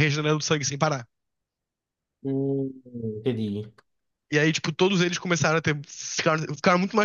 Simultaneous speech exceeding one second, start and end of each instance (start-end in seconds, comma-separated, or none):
none